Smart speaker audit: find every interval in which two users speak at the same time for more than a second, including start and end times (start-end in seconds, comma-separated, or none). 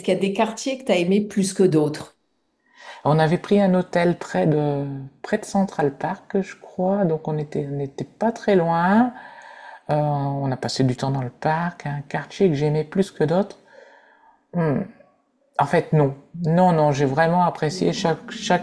none